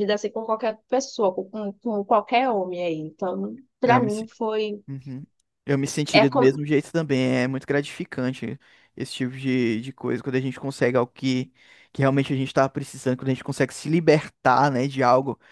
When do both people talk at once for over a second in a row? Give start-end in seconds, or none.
none